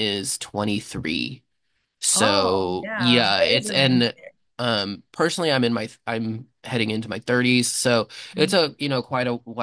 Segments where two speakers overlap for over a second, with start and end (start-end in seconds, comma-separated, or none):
2.1-4.2